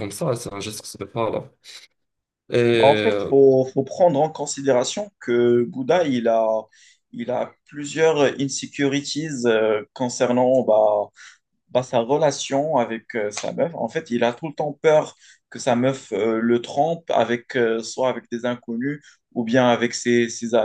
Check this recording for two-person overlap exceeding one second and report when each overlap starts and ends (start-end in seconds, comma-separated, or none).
none